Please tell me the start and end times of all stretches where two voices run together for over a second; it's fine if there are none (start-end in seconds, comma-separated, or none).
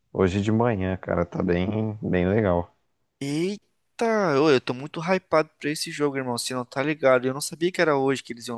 none